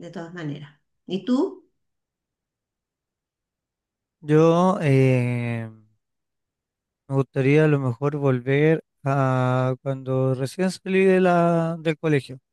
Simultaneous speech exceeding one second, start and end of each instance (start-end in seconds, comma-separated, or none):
none